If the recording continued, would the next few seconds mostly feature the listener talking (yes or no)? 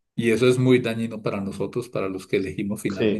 yes